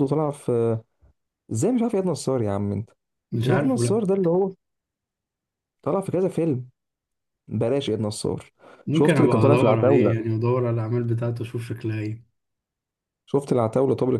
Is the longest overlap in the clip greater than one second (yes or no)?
yes